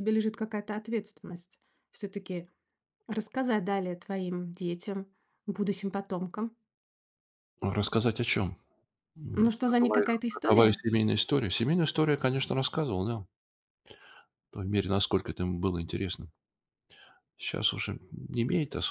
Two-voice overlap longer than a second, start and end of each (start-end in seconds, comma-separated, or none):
9.3-10.8